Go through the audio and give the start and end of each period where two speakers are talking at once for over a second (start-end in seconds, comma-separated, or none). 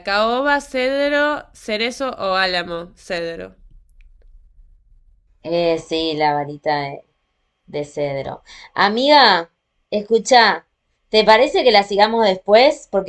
none